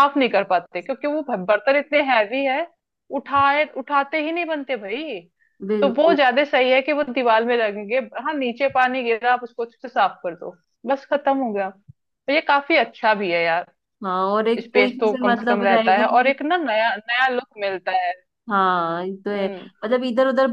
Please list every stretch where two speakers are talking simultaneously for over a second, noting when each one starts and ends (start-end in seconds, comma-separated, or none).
14.6-16.3